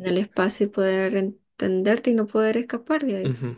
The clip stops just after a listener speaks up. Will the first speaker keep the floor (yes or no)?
no